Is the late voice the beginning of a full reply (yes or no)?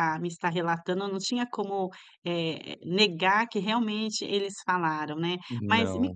no